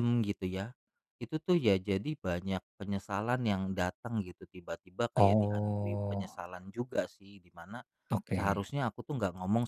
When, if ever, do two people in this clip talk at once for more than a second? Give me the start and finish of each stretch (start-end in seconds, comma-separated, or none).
5.2-6.4